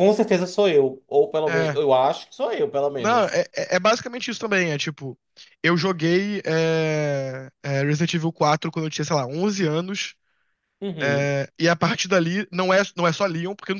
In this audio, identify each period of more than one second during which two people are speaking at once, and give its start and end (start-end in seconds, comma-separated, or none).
none